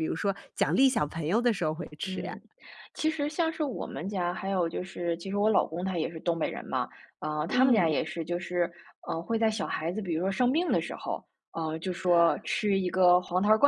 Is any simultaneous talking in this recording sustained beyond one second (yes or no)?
no